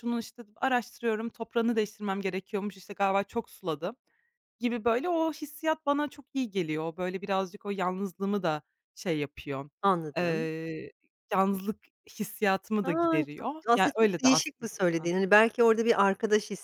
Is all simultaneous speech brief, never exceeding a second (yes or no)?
no